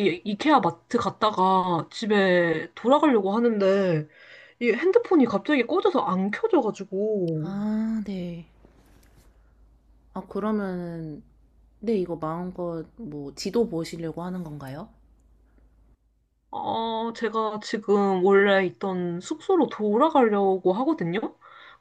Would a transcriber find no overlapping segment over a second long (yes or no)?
yes